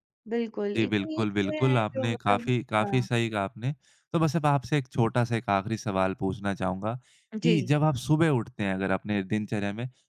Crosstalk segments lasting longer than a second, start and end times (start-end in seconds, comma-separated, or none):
0.8-3.1